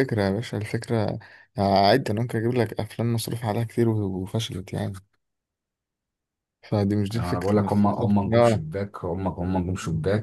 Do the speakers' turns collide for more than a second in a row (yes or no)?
yes